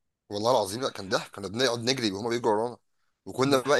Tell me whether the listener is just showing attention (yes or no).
yes